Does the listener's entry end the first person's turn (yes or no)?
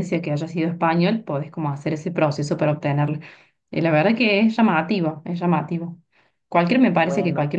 no